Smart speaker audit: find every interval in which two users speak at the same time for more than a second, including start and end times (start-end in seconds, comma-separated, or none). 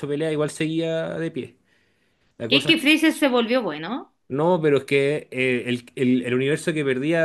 none